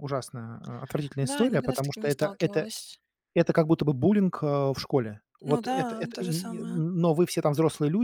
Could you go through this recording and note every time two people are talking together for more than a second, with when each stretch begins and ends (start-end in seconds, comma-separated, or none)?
1.2-2.7, 5.4-6.8